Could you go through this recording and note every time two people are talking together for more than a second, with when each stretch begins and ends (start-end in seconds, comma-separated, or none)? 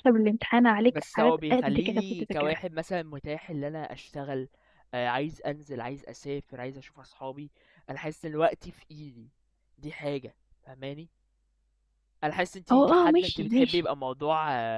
0.9-2.6, 12.7-13.9